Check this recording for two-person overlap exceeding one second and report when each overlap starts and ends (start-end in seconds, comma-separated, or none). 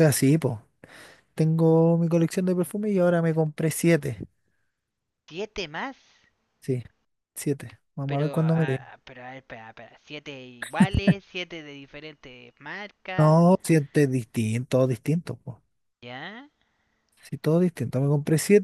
none